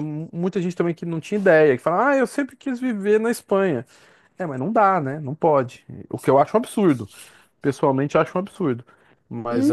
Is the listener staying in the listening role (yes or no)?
no